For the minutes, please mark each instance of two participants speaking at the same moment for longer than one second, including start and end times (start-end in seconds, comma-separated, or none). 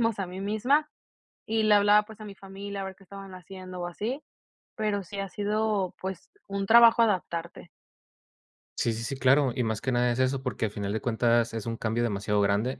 none